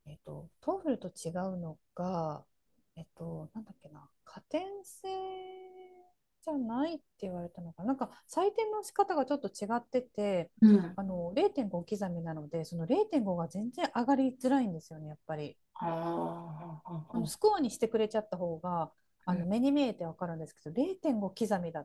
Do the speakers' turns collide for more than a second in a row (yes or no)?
no